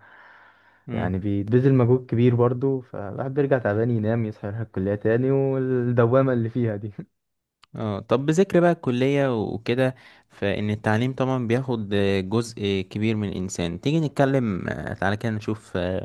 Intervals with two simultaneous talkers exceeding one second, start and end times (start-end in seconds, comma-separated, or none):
none